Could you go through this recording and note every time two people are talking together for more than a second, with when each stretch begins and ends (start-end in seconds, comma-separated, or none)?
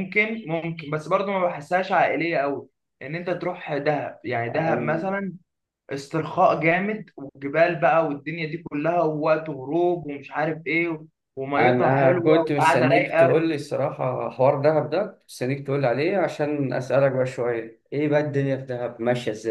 11.6-13.4